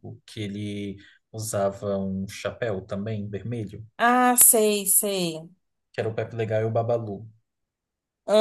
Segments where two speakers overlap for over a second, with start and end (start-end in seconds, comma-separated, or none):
none